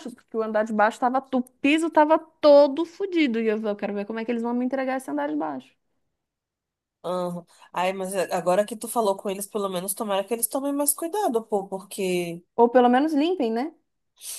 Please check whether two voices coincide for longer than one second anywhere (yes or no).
no